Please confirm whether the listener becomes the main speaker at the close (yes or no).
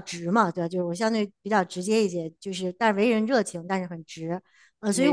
no